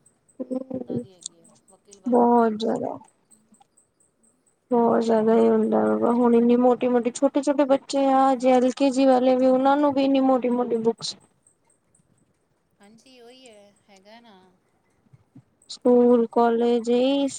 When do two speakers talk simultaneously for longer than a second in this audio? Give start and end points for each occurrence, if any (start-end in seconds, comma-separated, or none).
none